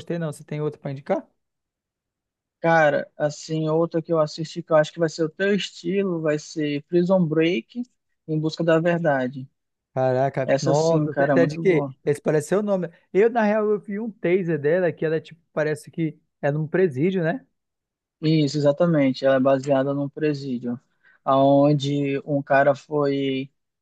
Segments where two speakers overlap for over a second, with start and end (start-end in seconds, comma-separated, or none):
10.4-11.9